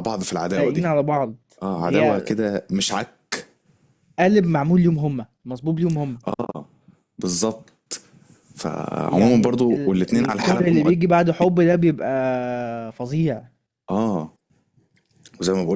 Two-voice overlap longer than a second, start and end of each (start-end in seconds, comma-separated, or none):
9.1-10.9